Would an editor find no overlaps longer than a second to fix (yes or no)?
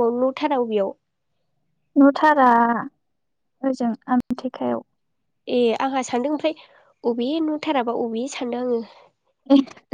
yes